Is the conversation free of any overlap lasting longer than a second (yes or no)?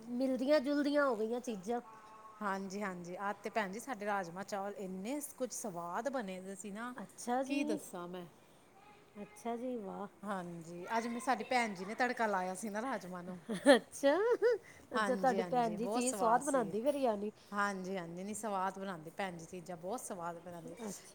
no